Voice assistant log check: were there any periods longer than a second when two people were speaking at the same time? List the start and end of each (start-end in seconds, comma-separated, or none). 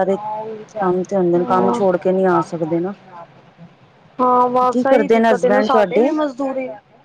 4.7-6.1